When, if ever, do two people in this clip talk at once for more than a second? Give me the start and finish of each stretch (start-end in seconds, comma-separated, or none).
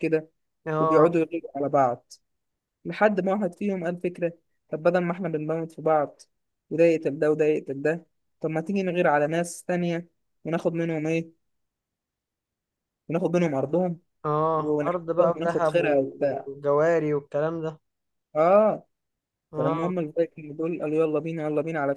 14.5-16.5